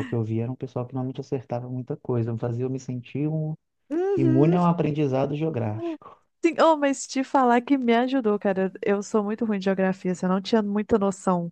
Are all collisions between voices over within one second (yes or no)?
yes